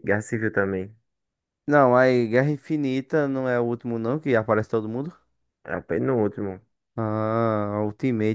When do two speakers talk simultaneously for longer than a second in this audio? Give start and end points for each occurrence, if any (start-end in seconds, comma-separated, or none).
none